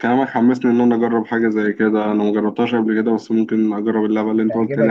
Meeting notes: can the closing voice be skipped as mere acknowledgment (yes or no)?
no